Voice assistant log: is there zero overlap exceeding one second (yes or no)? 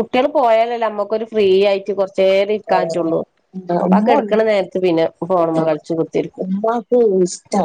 yes